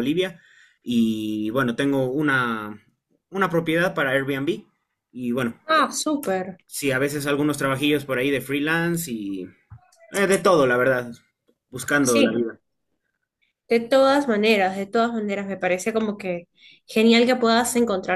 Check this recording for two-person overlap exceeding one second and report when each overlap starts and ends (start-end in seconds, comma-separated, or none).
none